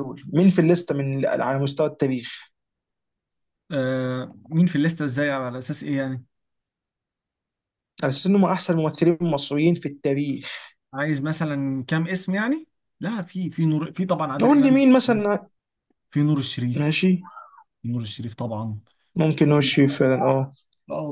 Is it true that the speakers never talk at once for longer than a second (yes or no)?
yes